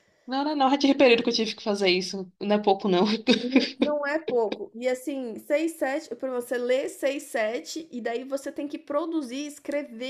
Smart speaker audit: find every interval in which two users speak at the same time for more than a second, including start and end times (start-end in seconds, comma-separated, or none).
none